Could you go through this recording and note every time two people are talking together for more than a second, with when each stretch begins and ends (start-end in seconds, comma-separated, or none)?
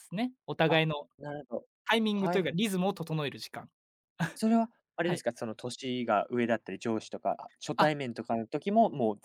none